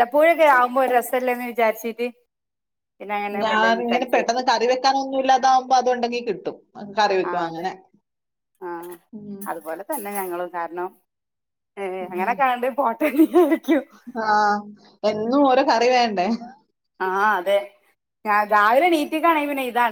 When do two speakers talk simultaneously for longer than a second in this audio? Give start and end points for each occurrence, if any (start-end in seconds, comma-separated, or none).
none